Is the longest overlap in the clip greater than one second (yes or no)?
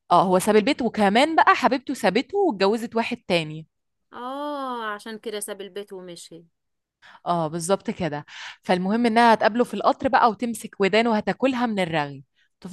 no